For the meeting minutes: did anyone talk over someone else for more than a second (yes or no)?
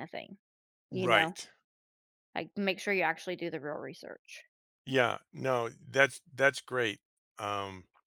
no